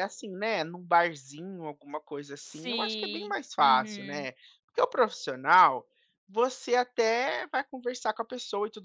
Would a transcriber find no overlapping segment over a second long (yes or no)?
no